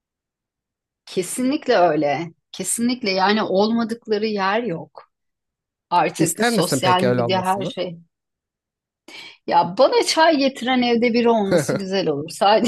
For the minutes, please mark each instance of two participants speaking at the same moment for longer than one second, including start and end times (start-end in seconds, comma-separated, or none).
6.2-7.7